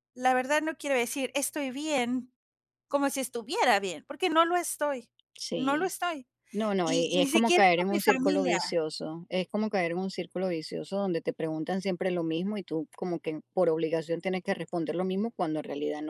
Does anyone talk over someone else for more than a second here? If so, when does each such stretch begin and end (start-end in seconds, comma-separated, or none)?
6.8-8.8